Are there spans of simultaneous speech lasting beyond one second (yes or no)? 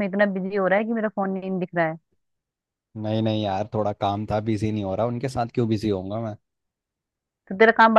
no